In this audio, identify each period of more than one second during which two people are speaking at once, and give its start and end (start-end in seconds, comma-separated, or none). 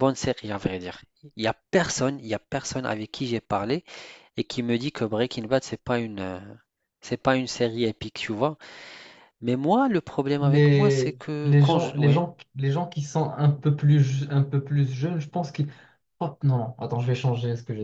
10.4-12.2